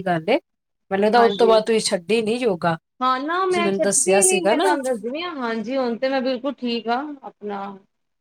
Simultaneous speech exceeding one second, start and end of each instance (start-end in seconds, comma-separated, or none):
3.4-4.8